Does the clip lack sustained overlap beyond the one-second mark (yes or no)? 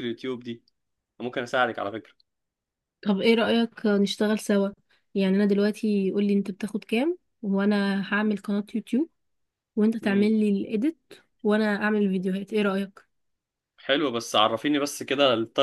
yes